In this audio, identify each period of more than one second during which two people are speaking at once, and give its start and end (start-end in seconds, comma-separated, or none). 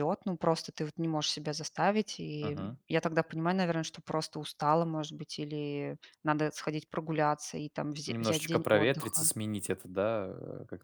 8.1-9.3